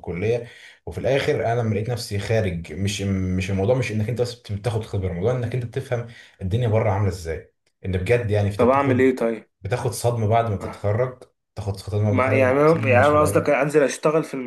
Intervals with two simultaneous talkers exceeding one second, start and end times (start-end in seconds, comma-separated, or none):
12.1-13.6